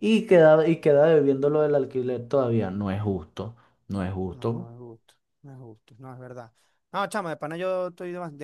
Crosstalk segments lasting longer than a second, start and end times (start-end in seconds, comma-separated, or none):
none